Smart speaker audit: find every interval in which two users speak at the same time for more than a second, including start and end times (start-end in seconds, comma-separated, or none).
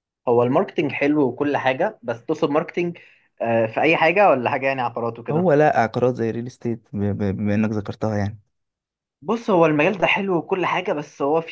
none